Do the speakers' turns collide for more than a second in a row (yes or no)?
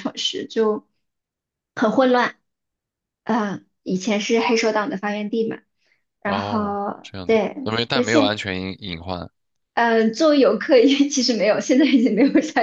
yes